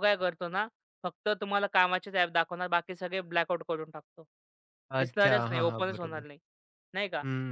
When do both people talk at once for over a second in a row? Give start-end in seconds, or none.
5.0-6.3